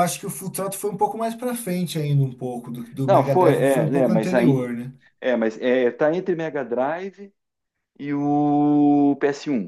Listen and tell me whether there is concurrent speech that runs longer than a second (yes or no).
yes